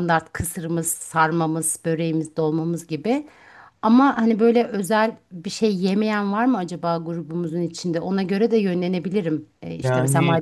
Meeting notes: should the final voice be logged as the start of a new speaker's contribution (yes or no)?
no